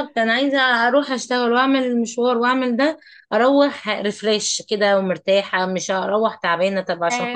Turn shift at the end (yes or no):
yes